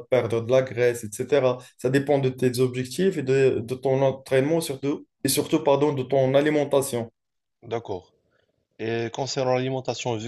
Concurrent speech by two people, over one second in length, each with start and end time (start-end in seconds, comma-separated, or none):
none